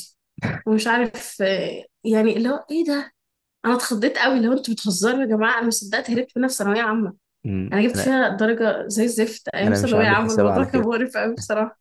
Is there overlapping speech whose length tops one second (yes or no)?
yes